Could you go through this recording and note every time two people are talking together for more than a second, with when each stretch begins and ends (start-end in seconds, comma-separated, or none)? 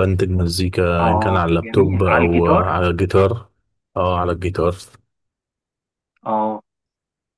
1.0-2.8